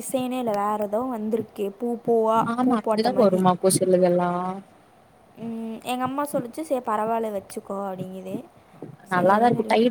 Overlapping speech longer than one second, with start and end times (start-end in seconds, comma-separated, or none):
none